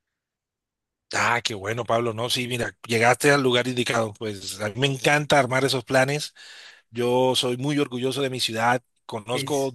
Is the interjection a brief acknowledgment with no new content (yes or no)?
yes